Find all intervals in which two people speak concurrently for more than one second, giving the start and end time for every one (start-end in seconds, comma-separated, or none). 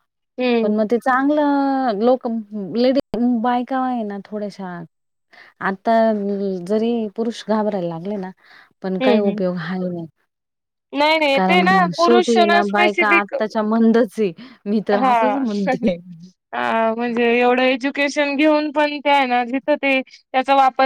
11.3-13.3